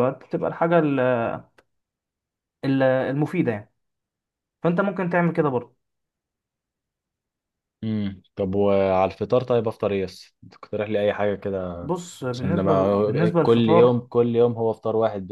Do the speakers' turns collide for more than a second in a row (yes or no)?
yes